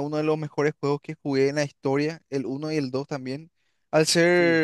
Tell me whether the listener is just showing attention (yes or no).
yes